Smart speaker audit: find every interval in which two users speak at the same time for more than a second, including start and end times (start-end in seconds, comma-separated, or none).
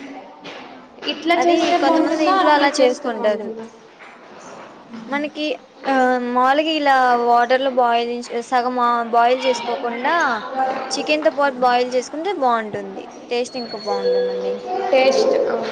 1.4-3.5